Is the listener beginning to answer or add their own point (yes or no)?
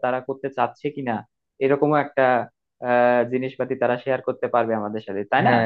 yes